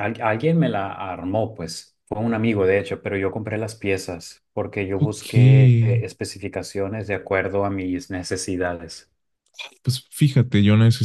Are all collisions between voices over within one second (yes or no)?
yes